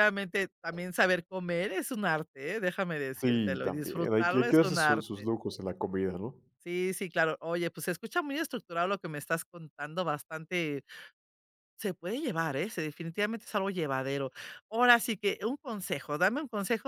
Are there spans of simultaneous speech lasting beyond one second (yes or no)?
yes